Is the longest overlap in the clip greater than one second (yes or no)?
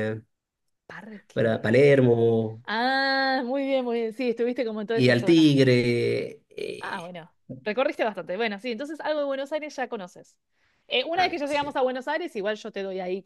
no